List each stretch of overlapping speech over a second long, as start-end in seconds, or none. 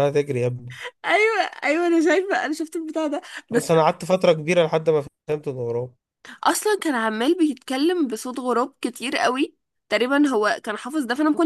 none